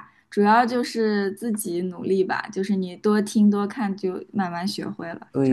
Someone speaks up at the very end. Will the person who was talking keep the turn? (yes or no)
no